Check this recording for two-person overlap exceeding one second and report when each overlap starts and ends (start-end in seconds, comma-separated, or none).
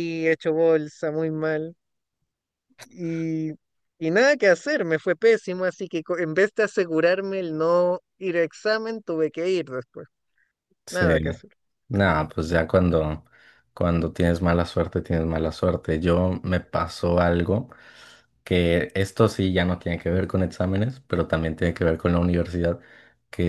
none